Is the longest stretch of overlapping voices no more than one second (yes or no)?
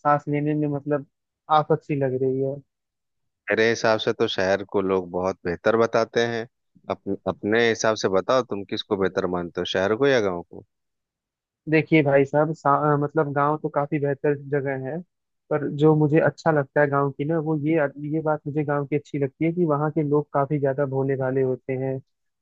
yes